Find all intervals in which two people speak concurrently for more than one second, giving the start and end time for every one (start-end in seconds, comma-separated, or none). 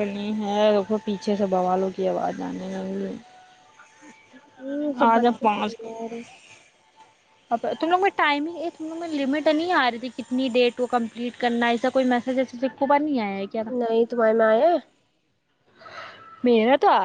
none